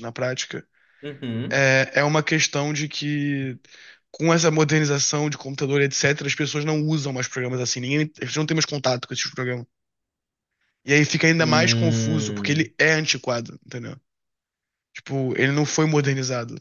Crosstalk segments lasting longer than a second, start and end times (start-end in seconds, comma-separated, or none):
11.4-12.7